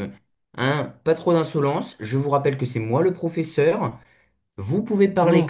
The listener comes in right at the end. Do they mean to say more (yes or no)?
no